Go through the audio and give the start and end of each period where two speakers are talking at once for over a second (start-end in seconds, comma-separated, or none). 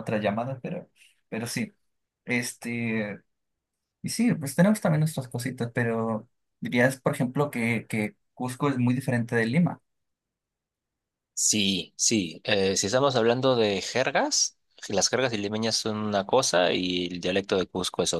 none